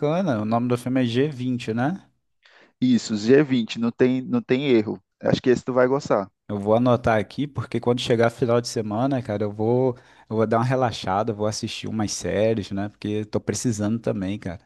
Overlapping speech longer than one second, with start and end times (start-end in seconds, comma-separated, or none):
none